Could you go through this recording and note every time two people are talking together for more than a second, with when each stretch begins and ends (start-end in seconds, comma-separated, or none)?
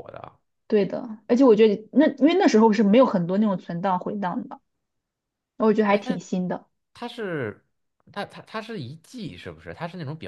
none